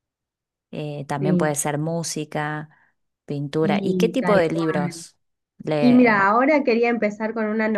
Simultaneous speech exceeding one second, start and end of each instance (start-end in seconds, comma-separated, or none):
3.6-5.0